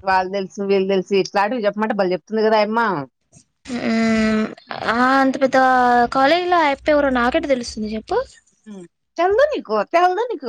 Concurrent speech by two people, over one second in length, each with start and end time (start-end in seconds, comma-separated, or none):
none